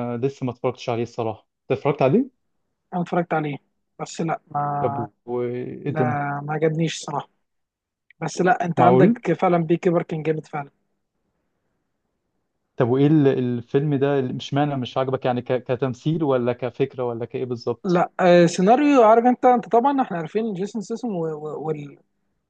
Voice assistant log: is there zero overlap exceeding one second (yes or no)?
yes